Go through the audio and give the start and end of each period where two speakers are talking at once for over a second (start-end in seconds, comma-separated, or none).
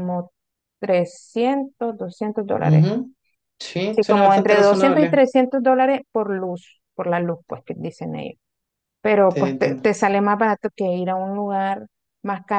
3.9-5.2